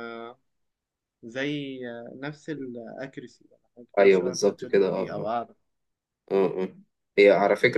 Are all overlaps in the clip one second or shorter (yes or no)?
no